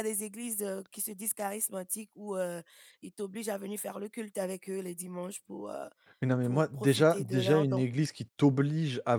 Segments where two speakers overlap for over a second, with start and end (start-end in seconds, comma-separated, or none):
6.4-7.8